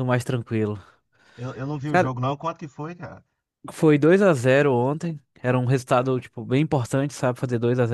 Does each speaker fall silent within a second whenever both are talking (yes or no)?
yes